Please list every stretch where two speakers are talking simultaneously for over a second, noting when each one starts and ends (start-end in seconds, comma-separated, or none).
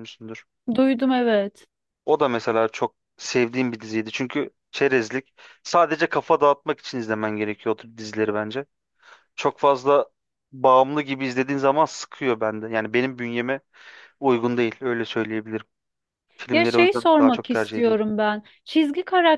16.5-18.0